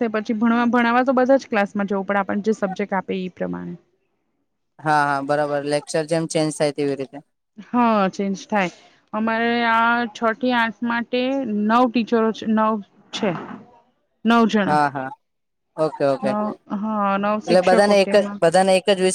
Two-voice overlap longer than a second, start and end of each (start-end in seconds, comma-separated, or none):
16.3-18.4